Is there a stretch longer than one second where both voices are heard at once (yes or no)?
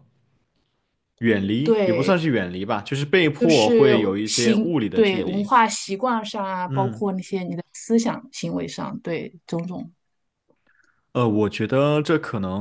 yes